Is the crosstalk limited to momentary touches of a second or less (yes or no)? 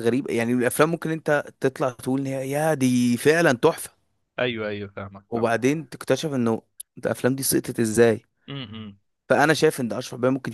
yes